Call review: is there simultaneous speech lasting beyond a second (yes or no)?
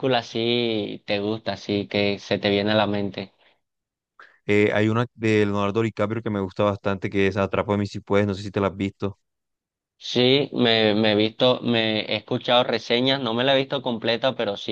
no